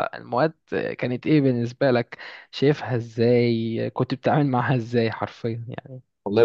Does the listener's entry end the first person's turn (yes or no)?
yes